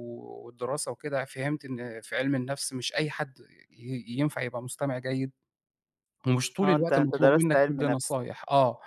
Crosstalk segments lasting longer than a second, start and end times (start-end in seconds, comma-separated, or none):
6.6-8.1